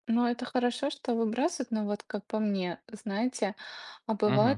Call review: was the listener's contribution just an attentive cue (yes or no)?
yes